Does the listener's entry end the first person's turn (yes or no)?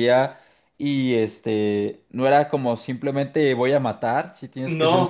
no